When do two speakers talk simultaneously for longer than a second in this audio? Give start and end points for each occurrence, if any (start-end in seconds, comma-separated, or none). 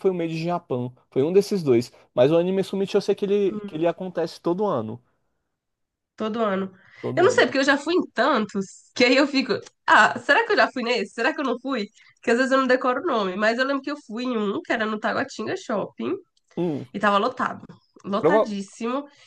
none